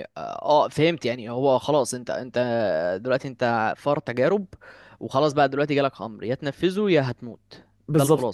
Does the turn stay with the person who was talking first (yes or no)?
no